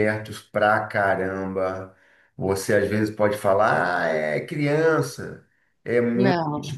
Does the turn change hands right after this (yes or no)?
no